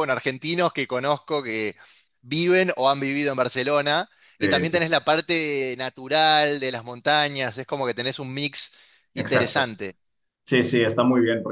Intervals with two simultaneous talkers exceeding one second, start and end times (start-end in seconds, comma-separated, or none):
none